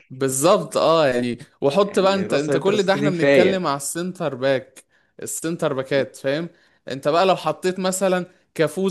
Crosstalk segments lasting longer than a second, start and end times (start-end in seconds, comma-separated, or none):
1.8-3.6